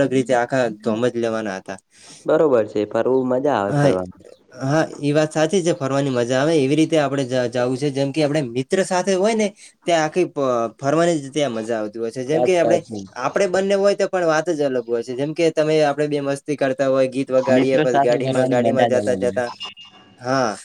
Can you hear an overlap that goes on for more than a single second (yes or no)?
yes